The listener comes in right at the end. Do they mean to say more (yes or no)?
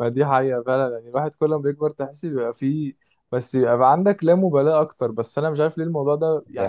no